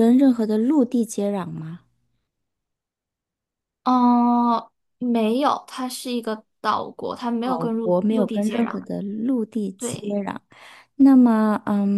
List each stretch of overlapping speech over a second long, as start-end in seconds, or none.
7.4-8.8